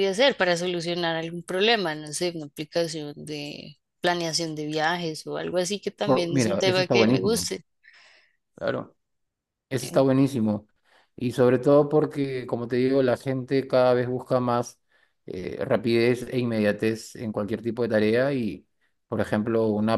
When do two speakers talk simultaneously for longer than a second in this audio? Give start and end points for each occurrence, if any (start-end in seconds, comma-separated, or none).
6.0-7.5